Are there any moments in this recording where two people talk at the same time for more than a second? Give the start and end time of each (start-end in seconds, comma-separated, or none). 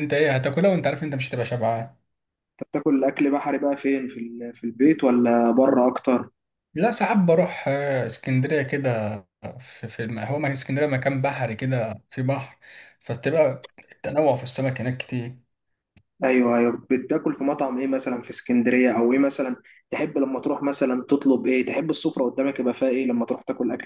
none